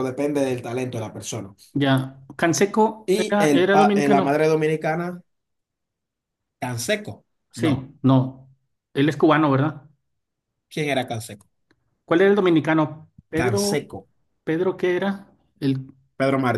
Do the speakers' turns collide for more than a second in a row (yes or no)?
yes